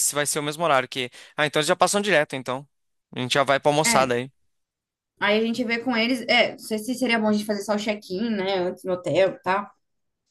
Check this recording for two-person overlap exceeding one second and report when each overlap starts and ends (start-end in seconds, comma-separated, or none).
none